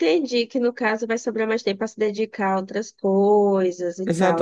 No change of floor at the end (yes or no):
no